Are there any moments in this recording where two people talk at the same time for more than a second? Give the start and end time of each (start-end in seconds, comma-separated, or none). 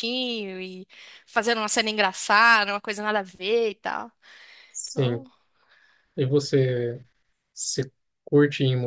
none